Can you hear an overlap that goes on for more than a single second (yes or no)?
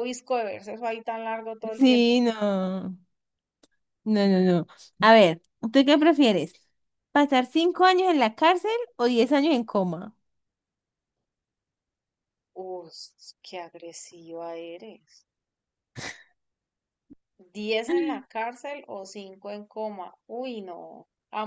no